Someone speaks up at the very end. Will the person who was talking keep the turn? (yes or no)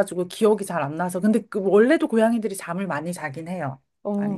no